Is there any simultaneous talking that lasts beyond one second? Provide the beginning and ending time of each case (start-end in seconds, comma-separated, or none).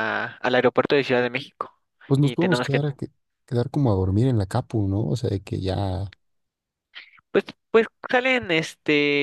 none